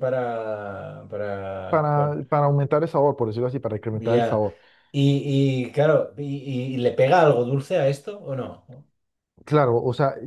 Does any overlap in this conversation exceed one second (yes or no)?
no